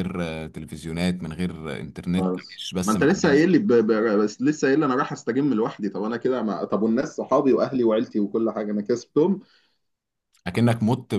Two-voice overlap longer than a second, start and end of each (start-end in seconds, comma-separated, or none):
2.2-3.4